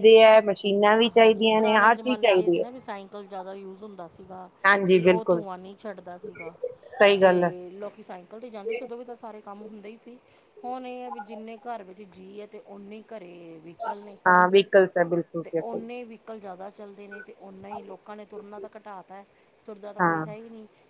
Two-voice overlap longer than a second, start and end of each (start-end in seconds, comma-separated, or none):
none